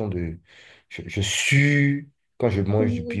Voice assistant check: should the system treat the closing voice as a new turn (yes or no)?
no